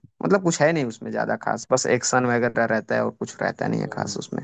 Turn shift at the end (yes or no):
yes